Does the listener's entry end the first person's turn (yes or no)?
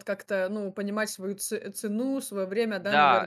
yes